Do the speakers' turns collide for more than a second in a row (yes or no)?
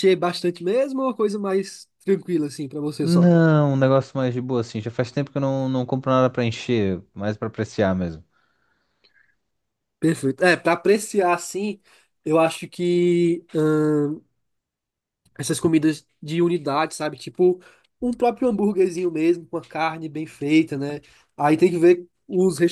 no